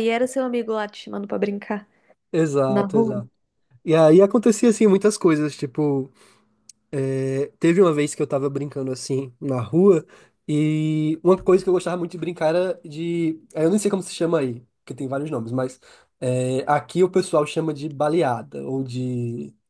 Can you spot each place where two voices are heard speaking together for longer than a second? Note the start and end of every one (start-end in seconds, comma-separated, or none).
none